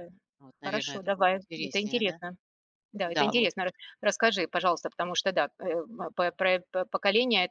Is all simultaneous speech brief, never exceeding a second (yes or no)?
no